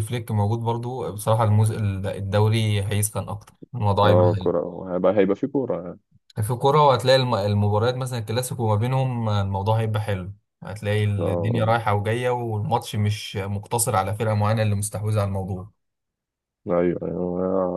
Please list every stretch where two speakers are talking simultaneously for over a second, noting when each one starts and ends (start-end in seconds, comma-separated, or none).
none